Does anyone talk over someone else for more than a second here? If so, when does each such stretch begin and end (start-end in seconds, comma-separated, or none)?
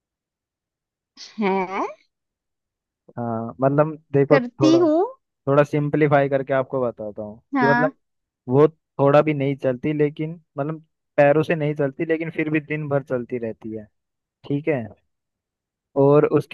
none